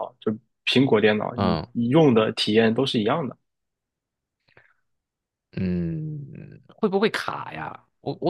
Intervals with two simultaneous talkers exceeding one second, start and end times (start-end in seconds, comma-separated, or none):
none